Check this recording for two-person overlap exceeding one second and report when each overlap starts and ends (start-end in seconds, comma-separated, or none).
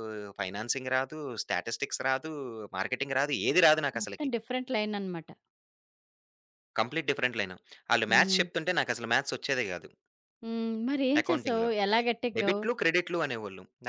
none